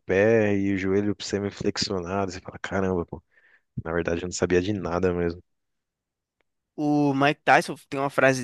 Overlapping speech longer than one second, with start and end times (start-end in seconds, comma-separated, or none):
none